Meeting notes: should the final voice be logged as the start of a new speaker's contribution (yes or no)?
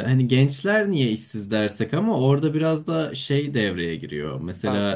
no